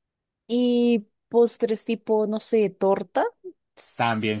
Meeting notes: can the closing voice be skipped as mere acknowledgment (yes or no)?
no